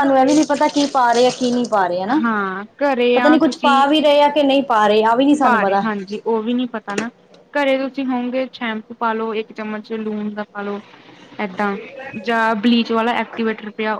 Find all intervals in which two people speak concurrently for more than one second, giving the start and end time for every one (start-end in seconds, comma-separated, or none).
none